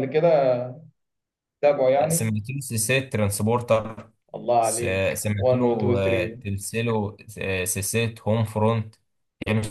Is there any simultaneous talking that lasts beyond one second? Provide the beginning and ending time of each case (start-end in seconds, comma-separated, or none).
4.6-6.4